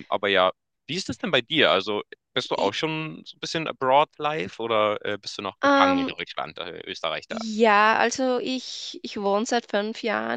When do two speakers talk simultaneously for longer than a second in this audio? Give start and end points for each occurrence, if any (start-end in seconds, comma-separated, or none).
none